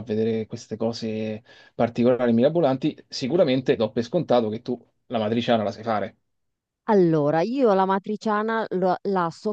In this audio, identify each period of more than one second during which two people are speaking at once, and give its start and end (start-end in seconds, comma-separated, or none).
none